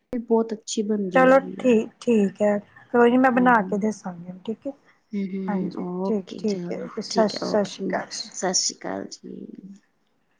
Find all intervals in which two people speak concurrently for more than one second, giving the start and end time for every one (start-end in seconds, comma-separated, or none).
5.5-7.9